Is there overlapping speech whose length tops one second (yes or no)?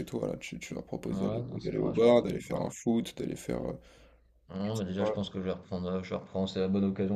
yes